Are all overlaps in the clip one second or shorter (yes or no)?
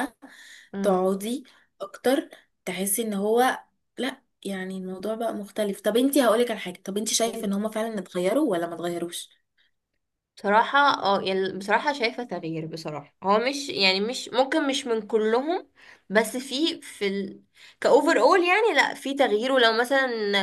yes